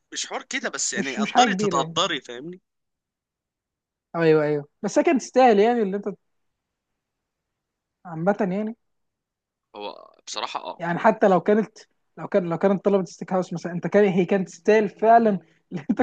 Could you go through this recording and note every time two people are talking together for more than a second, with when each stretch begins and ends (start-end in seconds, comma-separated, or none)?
0.9-2.2